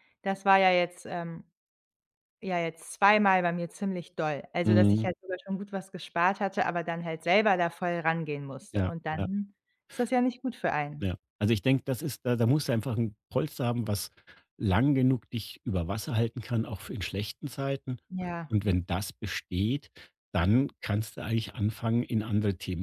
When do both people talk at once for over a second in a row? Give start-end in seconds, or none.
none